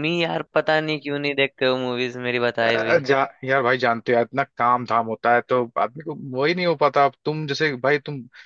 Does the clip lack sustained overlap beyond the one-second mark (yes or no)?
yes